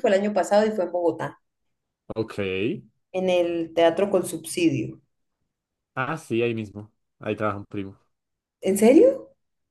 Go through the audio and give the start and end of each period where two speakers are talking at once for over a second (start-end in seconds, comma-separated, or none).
none